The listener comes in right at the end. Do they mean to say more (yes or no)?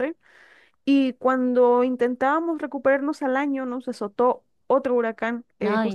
no